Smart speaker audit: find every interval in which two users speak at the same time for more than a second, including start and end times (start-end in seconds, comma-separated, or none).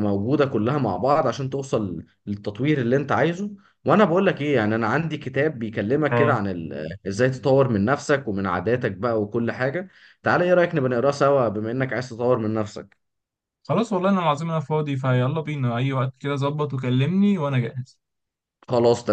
none